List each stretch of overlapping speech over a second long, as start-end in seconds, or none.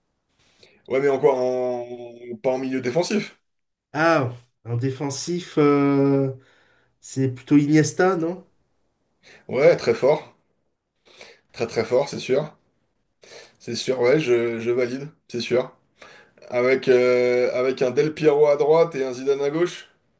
none